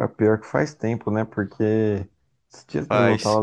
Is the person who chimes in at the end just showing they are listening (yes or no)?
yes